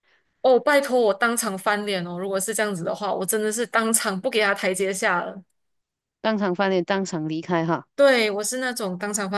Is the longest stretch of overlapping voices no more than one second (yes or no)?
yes